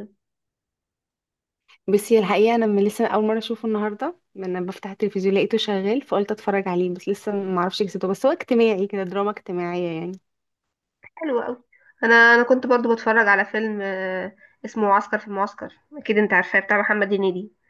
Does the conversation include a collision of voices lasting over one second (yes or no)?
no